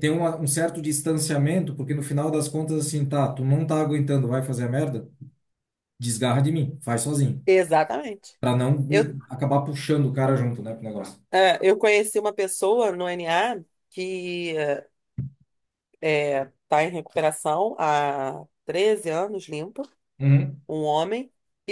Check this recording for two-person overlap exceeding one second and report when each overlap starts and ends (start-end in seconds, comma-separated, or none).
none